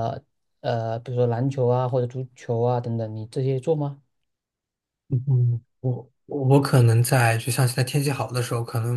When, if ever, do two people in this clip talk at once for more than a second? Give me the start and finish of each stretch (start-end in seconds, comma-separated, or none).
none